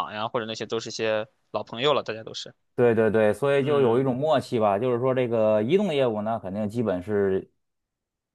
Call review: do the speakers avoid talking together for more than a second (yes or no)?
yes